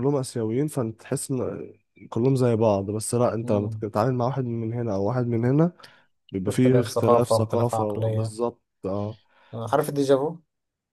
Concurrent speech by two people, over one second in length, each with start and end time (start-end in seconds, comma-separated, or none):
6.4-8.3